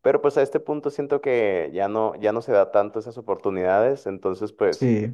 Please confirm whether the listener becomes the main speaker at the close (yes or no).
no